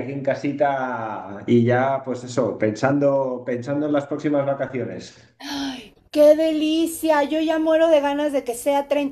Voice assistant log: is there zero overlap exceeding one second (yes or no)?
yes